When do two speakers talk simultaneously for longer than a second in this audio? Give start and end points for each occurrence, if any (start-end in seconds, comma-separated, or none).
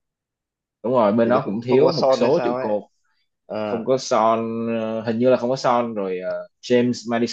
1.2-2.7